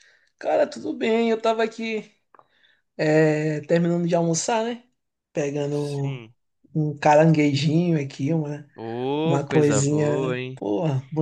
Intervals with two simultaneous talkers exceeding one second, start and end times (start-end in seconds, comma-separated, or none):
9.2-10.6